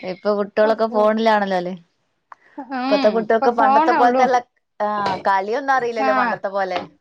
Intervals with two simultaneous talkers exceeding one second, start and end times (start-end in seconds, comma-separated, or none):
2.8-4.2